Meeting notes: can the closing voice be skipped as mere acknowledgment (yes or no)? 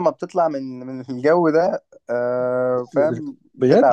no